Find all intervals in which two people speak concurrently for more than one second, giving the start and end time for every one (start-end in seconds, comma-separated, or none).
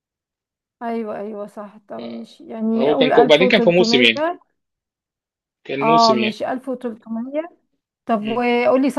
2.8-4.1